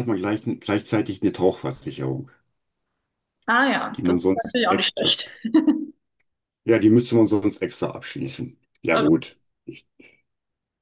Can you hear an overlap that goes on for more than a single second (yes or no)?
yes